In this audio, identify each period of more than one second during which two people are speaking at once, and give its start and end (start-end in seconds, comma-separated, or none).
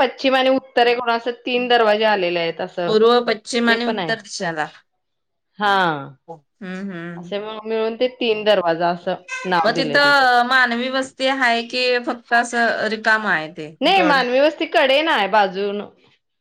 none